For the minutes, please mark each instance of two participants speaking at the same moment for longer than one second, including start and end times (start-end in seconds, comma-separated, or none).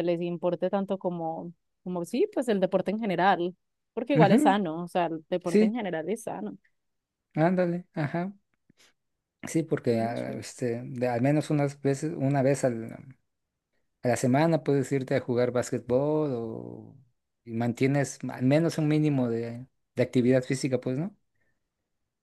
none